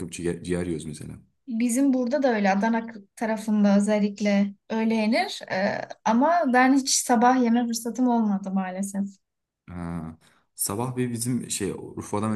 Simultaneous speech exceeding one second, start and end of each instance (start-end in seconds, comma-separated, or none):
none